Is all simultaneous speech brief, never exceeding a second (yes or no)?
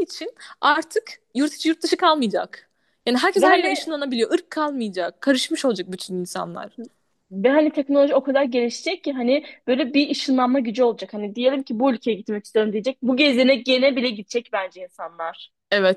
yes